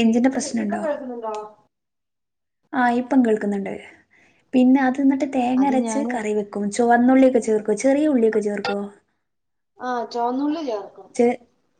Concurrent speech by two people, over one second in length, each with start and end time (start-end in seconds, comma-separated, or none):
none